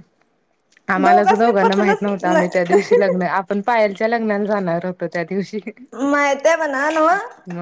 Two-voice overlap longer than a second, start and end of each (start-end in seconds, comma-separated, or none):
1.0-3.0